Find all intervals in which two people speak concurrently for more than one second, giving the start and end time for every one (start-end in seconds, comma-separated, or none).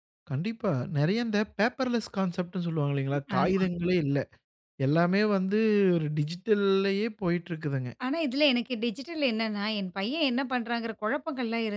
none